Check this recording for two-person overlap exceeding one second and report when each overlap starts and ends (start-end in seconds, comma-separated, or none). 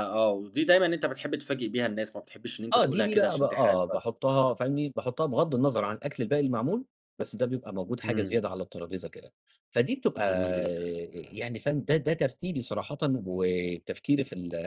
2.7-4.0